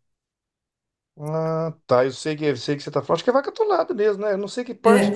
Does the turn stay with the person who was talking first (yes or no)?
no